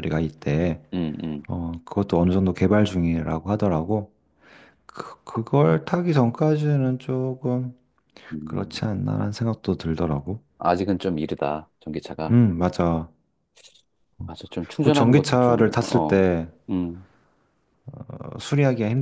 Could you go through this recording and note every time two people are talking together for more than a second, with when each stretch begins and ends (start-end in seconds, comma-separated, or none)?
14.8-16.3